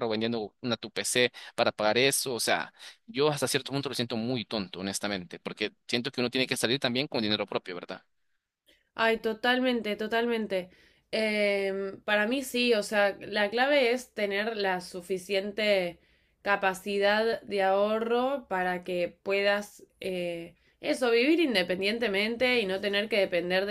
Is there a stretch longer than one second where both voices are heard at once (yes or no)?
no